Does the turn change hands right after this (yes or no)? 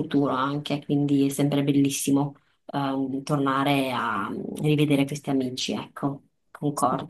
yes